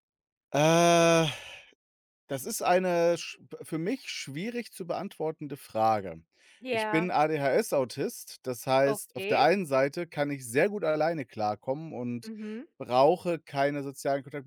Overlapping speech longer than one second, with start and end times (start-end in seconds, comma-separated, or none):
none